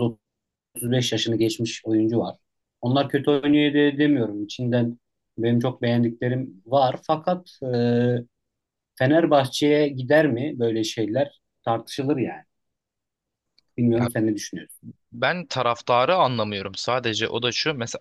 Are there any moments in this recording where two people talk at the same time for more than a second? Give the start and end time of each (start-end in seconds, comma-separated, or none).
none